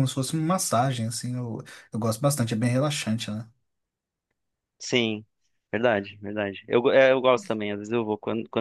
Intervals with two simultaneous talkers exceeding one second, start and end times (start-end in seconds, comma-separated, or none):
none